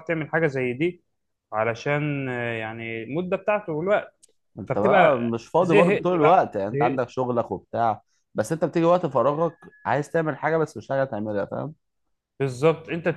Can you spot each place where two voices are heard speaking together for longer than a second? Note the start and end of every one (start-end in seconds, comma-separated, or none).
4.7-7.0